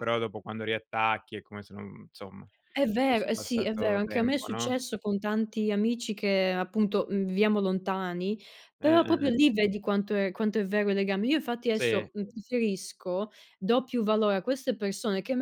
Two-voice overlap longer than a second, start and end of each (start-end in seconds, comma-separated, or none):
3.0-4.8